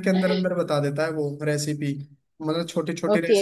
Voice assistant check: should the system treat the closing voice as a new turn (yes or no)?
yes